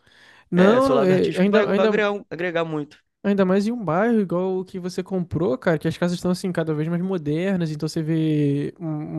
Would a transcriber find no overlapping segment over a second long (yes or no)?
no